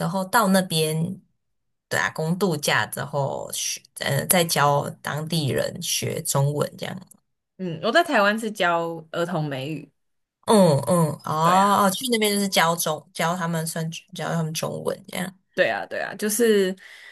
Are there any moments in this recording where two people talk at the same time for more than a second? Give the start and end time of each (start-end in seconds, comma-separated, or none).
none